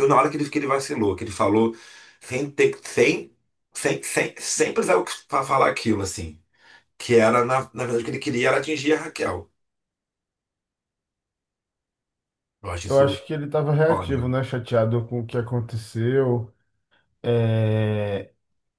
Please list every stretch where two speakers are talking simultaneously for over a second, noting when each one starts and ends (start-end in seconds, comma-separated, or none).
none